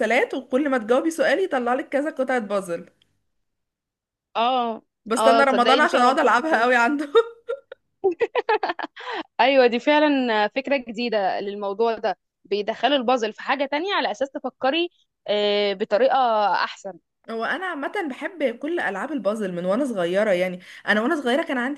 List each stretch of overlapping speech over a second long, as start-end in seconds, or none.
5.2-6.6